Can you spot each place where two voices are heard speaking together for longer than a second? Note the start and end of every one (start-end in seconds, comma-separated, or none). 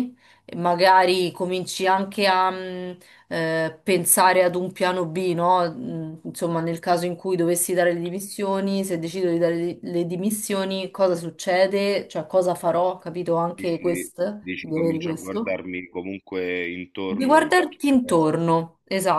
13.6-15.5